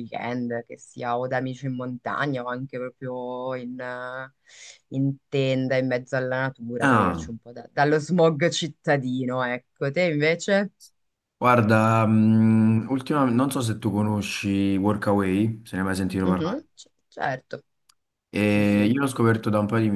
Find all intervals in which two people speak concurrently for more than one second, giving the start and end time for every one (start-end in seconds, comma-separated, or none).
none